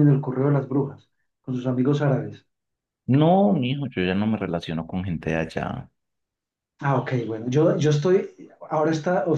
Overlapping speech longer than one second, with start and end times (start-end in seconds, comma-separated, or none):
none